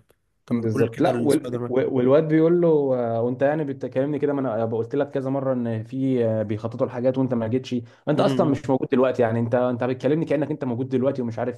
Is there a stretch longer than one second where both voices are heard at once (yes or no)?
yes